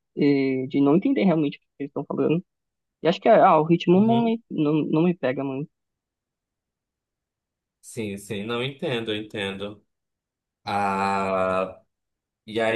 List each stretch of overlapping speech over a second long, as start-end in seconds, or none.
none